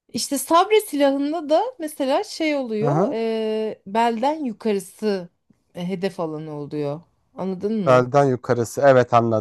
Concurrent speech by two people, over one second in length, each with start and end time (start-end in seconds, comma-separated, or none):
none